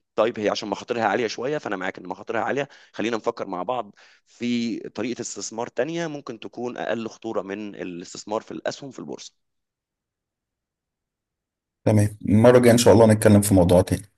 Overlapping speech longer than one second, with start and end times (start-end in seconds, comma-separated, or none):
none